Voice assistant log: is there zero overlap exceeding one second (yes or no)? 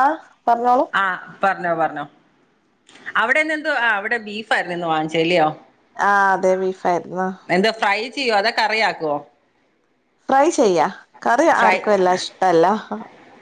yes